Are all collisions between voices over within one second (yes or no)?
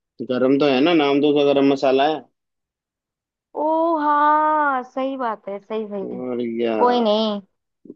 yes